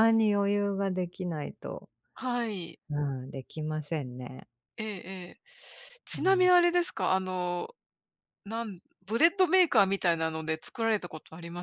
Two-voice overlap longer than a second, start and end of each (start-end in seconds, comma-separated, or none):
none